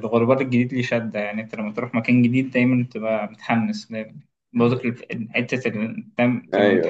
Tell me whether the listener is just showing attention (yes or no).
yes